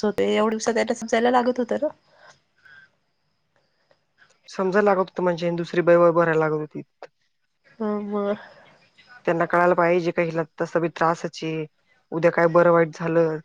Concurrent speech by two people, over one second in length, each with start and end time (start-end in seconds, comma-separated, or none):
none